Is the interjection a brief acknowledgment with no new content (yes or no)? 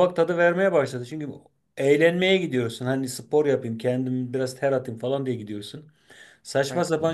yes